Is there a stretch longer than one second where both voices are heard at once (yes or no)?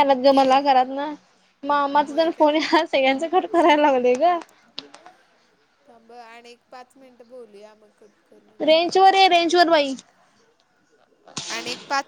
no